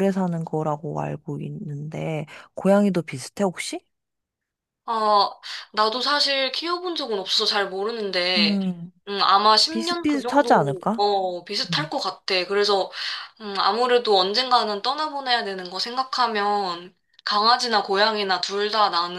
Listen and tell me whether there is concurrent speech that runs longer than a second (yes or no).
yes